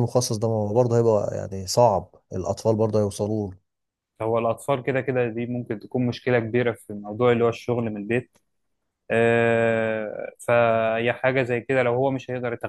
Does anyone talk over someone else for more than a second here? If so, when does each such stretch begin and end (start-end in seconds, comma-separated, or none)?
none